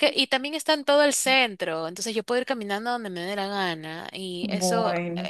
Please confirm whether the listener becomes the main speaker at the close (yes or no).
no